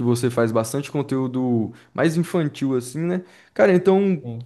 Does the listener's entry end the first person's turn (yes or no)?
no